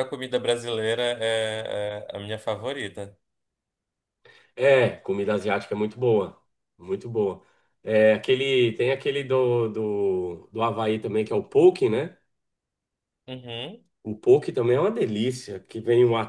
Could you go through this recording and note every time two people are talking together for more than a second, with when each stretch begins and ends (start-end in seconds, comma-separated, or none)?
none